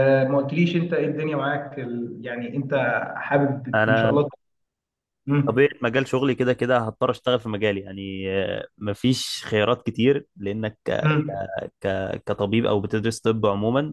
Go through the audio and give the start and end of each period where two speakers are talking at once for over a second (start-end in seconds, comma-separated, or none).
none